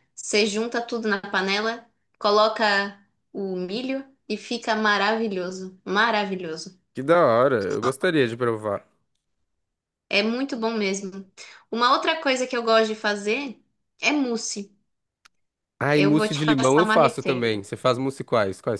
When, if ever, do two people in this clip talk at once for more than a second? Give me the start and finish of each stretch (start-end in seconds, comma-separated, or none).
15.9-17.6